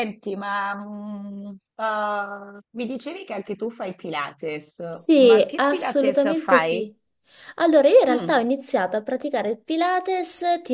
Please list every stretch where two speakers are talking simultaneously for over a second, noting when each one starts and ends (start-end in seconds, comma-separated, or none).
5.2-6.9